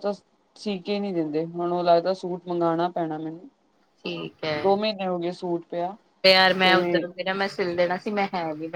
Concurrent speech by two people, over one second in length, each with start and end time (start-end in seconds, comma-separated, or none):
none